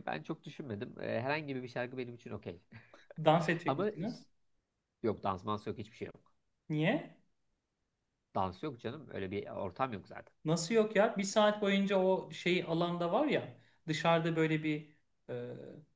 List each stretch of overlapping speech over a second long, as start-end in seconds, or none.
none